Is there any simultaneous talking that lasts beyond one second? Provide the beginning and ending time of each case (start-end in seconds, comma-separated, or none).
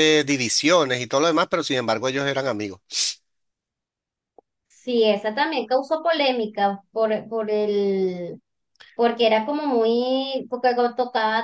none